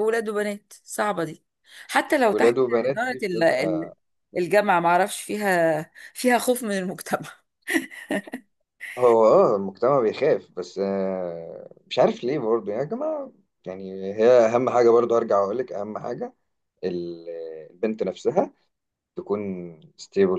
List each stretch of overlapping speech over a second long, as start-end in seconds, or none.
2.3-3.9